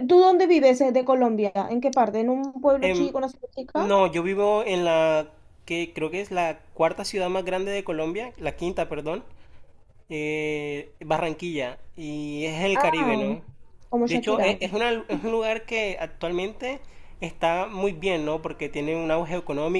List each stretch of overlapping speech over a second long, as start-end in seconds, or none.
none